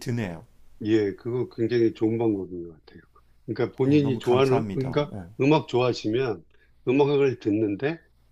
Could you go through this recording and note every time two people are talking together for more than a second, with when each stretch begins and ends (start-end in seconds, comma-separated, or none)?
3.8-5.3